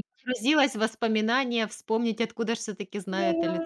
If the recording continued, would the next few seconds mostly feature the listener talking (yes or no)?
yes